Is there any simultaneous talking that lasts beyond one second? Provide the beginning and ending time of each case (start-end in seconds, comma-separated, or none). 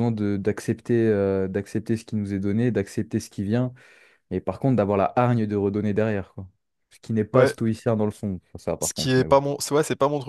none